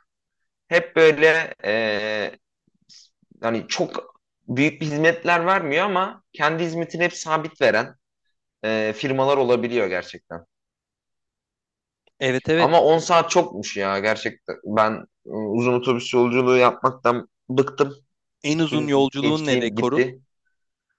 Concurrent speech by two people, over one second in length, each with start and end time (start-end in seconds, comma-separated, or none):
18.6-20.1